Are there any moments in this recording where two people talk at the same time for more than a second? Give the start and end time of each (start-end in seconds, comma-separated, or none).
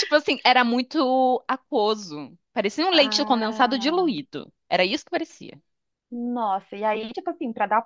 2.9-4.2